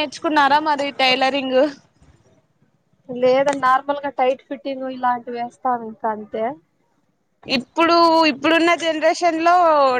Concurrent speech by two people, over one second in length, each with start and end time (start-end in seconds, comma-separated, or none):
none